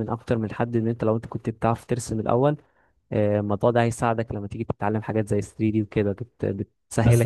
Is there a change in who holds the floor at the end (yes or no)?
yes